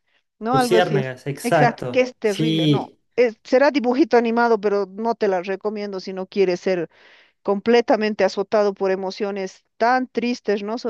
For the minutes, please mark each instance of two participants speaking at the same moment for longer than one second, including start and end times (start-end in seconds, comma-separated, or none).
0.5-3.0